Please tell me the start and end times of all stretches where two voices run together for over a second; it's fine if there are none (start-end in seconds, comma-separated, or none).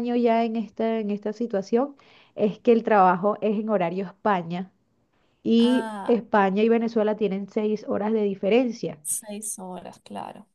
none